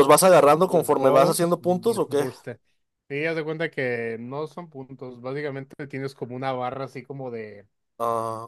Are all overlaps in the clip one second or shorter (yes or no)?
no